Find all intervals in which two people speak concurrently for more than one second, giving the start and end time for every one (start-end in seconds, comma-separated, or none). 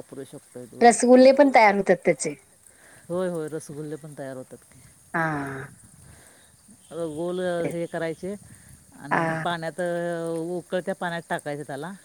none